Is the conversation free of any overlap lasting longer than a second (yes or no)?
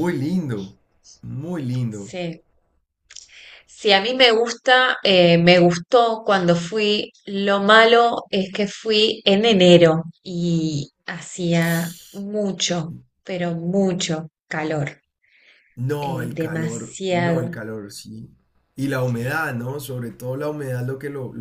no